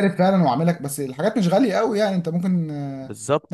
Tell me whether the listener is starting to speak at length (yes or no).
yes